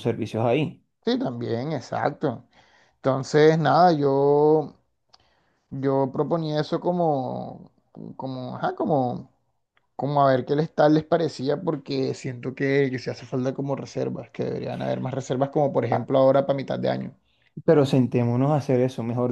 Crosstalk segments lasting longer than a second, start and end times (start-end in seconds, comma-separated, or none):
none